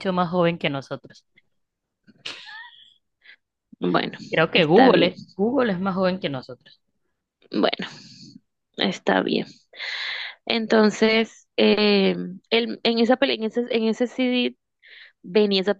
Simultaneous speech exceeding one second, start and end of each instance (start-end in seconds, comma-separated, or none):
none